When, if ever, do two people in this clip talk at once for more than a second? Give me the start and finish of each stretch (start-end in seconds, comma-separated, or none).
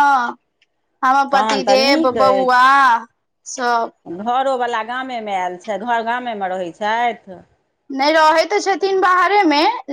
1.3-2.6